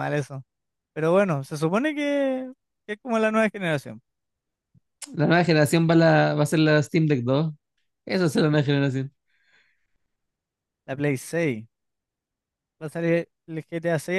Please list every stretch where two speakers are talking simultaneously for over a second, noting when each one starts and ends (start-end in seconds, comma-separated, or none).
none